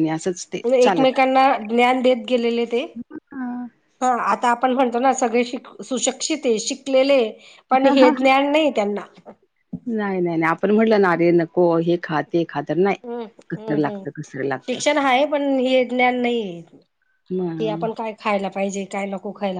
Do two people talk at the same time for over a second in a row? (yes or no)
no